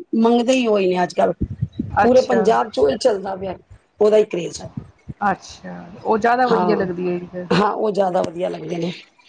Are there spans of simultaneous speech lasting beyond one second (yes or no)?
no